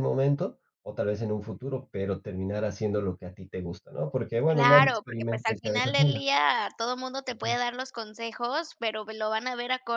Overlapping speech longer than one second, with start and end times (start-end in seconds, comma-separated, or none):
4.5-6.2